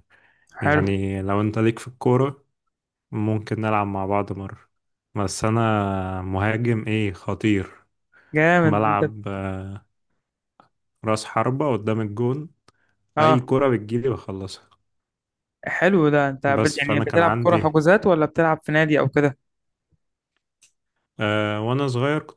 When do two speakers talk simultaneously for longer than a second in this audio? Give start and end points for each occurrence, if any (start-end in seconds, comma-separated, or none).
16.4-17.8